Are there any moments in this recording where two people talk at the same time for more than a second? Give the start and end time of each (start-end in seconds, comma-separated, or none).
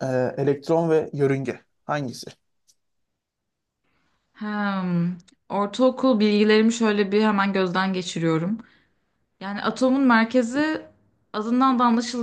none